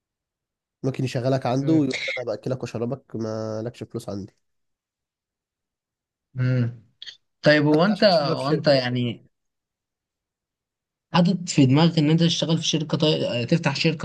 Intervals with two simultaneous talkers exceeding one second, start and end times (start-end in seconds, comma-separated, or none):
7.7-9.0